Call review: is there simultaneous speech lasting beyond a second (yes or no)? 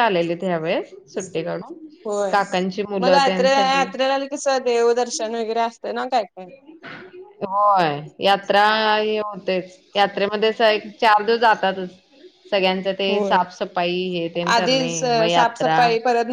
no